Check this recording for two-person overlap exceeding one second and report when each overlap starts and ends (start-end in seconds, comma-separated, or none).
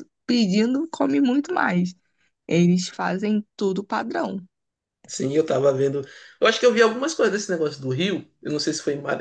none